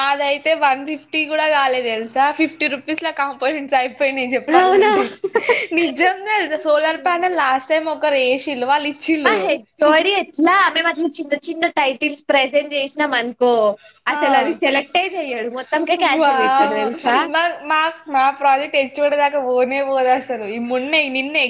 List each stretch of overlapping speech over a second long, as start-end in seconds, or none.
none